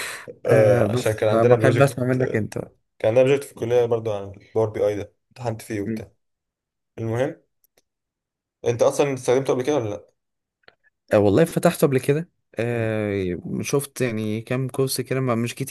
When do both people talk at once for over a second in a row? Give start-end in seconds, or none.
0.5-1.9